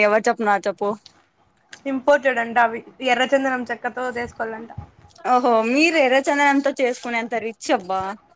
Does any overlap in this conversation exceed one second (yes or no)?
no